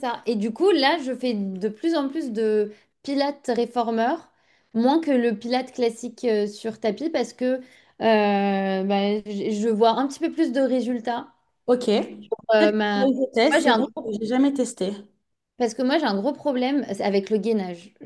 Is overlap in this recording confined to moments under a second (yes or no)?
no